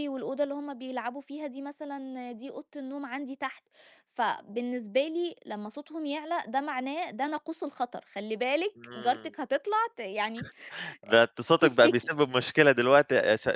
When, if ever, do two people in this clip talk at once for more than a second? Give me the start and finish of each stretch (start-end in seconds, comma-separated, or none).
none